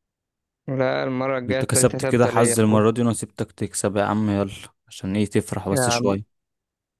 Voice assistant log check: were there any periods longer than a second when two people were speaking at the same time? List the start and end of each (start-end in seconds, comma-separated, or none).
1.5-2.8